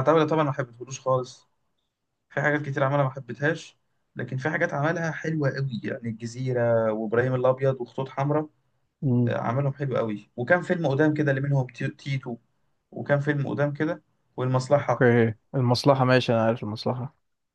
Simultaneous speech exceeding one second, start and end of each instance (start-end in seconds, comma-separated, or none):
none